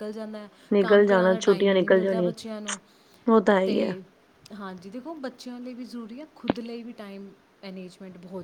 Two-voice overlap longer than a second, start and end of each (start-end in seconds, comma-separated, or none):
0.7-2.3